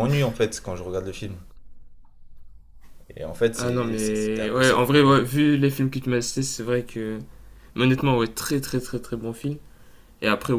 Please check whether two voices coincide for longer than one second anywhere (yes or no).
yes